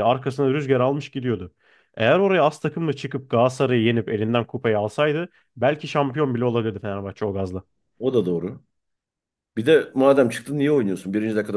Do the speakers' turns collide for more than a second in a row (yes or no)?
no